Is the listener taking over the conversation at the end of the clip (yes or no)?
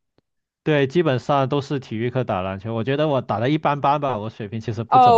yes